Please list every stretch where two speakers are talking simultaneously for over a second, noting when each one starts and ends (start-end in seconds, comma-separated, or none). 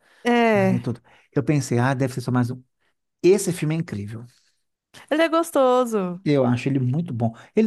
none